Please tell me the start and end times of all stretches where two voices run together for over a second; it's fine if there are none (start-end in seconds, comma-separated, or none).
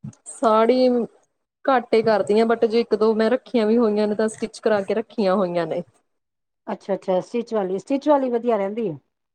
none